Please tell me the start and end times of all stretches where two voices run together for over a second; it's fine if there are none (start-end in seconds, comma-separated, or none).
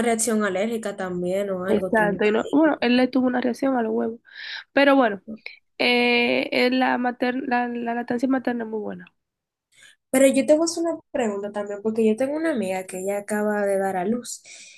1.7-2.9